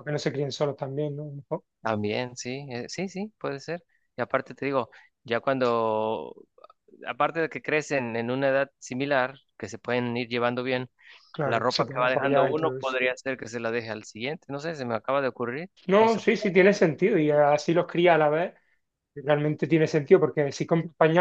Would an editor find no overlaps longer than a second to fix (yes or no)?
no